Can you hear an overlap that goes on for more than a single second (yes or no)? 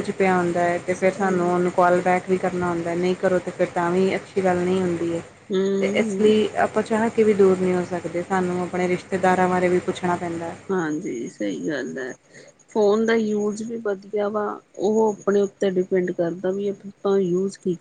no